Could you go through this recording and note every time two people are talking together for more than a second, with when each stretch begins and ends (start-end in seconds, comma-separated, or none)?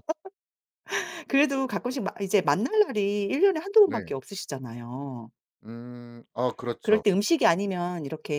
none